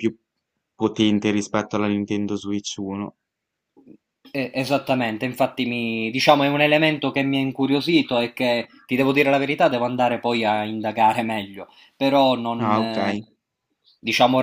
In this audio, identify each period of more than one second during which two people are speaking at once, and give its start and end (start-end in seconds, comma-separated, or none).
none